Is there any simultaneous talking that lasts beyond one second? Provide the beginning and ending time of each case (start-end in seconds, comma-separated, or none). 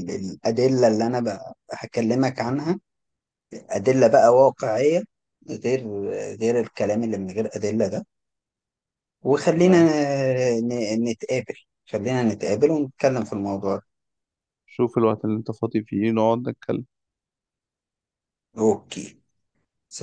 none